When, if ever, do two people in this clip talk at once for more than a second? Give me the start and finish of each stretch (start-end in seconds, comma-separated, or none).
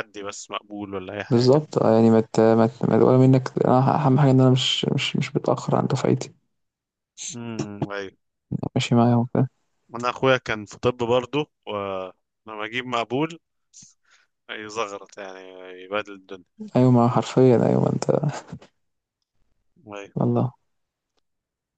none